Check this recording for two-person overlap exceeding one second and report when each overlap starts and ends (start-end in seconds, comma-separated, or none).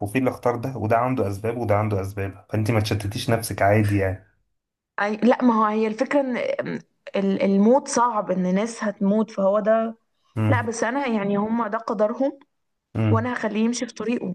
none